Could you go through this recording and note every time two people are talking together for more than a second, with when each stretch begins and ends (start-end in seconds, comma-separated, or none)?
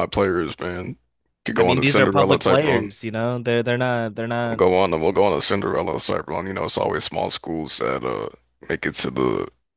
1.6-2.9